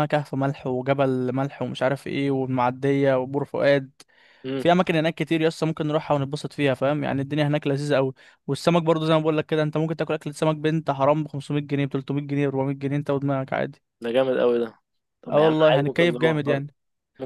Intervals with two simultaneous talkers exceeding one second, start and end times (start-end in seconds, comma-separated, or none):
15.3-16.7